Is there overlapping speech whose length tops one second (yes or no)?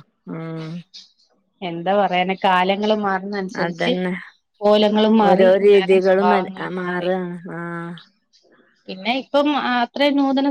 yes